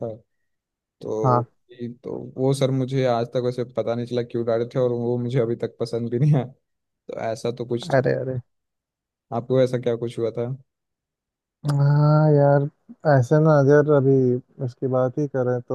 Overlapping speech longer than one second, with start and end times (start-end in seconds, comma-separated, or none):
none